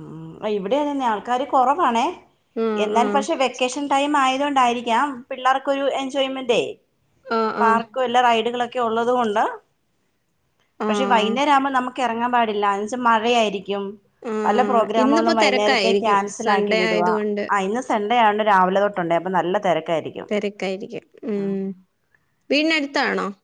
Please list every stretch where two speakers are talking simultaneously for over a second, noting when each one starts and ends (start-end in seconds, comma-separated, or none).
14.4-17.1